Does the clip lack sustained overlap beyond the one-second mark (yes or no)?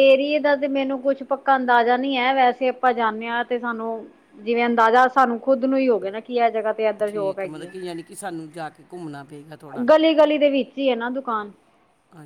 yes